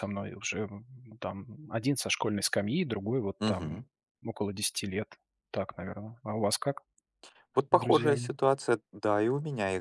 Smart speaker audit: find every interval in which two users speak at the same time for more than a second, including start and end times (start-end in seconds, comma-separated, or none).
none